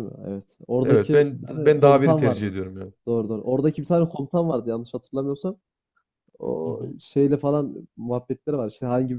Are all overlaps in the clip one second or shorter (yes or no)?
no